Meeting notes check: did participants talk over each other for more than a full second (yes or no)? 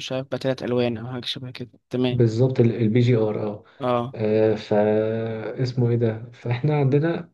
no